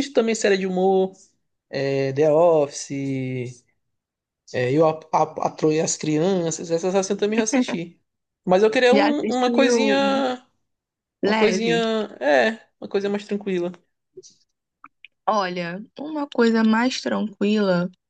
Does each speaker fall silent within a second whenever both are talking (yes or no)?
no